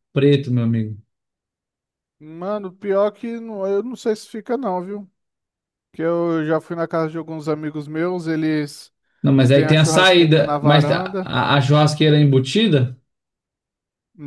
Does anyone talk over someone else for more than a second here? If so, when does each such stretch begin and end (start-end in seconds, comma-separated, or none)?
9.5-11.3